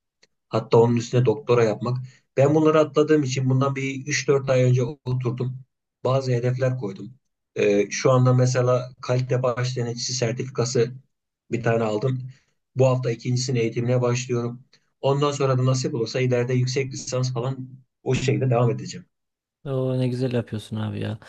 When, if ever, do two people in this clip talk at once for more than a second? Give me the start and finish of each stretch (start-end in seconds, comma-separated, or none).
none